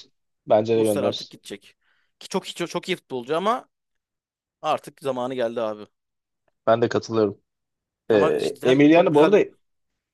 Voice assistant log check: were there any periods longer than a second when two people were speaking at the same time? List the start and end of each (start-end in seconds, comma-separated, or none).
8.1-9.4